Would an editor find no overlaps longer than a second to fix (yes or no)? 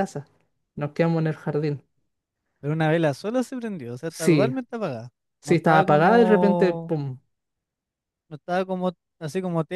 no